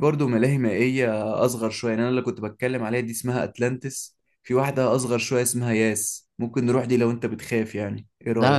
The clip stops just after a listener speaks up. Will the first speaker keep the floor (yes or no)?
no